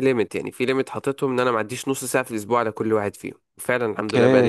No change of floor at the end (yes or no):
no